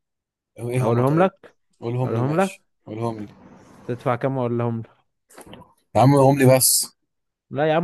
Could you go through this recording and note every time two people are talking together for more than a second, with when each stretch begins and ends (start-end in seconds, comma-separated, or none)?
none